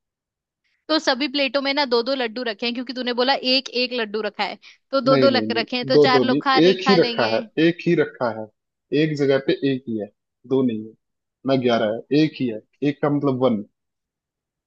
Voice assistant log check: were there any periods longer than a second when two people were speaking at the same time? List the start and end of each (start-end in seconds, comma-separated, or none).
5.1-7.4